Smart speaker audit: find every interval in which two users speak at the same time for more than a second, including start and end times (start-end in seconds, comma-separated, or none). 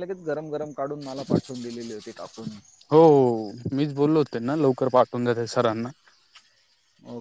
none